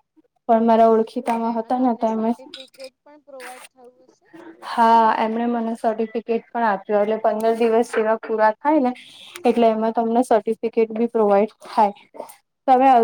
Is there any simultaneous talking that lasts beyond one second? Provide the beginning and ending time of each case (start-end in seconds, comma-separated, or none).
none